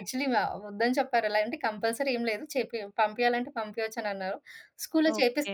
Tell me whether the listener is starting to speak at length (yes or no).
no